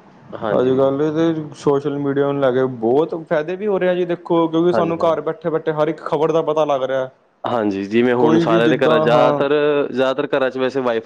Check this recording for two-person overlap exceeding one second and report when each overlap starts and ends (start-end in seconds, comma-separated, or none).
8.2-9.4